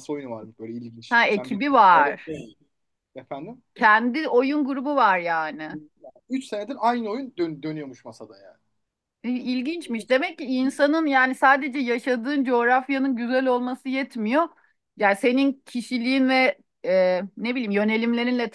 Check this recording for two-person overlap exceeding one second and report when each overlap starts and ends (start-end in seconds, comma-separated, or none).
1.1-2.3